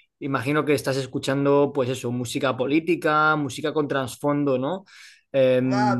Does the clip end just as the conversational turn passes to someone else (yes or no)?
yes